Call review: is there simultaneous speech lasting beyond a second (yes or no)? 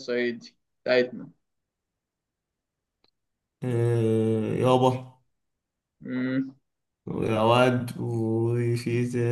no